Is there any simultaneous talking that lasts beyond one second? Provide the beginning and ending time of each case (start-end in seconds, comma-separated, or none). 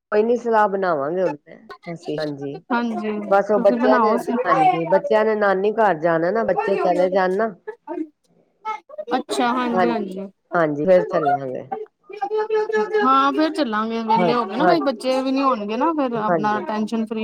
3.3-5.1